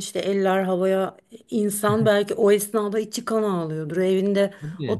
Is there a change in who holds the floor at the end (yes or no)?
no